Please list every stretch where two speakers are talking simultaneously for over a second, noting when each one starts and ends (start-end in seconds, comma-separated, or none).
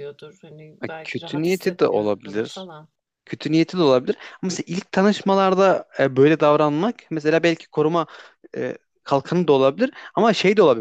0.8-2.7